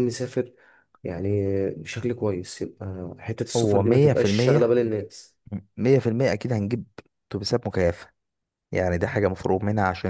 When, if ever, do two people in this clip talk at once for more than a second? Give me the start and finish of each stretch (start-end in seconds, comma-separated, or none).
3.5-4.8